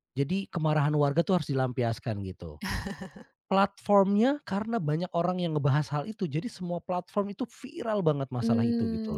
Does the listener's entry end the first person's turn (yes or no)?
yes